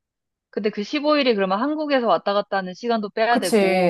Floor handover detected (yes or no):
yes